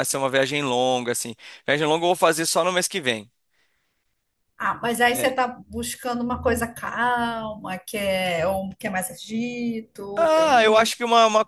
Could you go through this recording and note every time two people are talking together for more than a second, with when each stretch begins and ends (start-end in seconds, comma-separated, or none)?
none